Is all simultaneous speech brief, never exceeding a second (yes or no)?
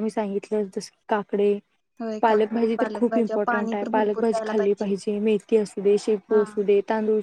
no